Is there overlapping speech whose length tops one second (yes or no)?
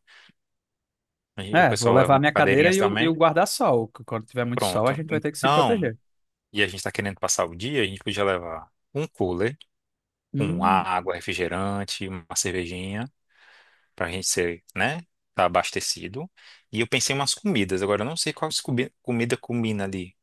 yes